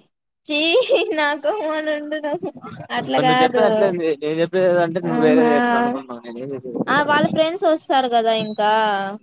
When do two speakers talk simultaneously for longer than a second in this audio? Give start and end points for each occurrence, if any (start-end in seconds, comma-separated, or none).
none